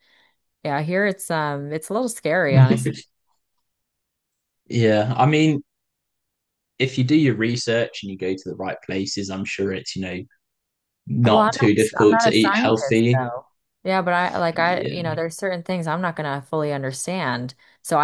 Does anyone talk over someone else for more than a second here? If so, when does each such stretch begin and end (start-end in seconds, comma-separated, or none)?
11.2-13.2